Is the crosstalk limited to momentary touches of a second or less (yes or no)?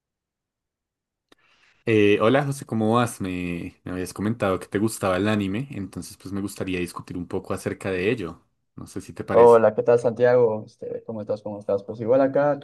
yes